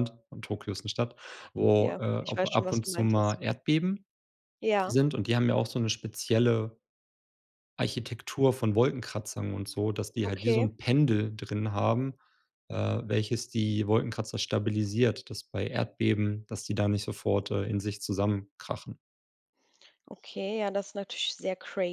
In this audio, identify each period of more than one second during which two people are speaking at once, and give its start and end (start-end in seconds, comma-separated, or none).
1.8-3.4